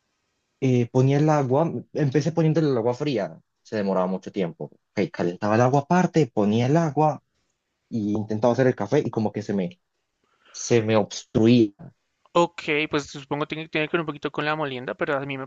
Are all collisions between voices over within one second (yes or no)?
yes